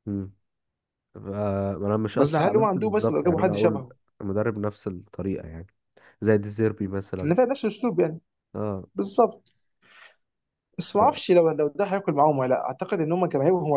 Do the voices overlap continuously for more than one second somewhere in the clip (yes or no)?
yes